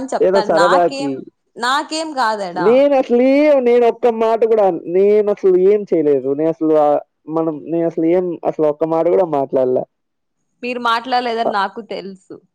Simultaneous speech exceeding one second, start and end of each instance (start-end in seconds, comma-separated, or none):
none